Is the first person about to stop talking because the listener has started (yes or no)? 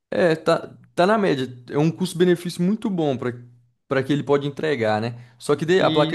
no